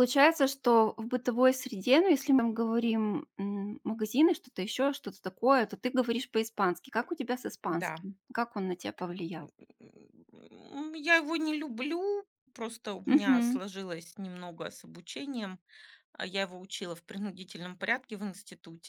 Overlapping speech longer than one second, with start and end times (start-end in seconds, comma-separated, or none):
none